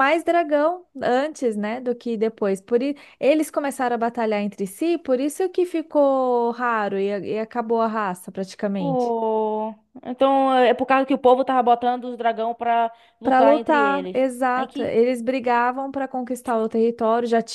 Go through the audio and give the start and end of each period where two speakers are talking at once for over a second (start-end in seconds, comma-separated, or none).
13.2-14.9